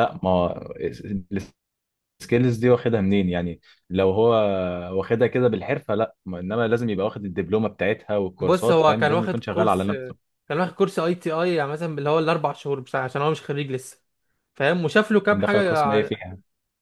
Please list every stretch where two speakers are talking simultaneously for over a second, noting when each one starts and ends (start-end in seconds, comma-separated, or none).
8.4-9.9